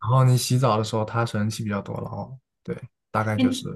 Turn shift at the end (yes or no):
yes